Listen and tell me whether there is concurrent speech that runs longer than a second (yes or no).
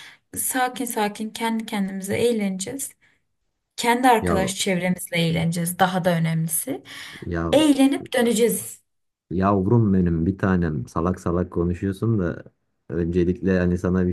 no